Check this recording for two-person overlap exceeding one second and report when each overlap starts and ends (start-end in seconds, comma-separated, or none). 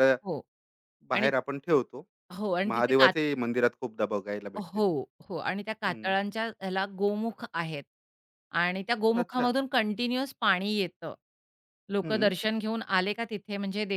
none